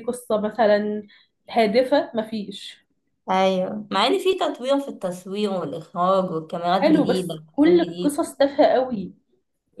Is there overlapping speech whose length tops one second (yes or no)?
yes